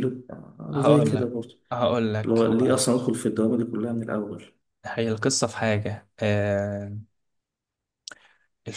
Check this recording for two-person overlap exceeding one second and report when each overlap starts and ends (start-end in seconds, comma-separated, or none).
none